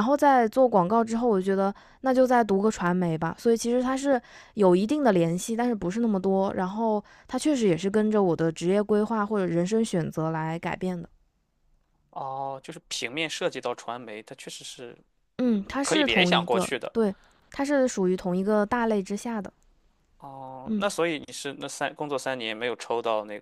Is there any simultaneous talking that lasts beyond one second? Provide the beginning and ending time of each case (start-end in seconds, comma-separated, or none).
15.4-16.9